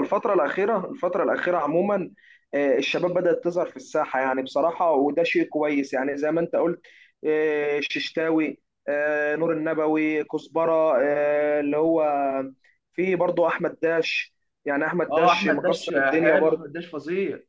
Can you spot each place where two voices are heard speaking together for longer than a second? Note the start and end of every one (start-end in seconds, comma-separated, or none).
15.1-16.7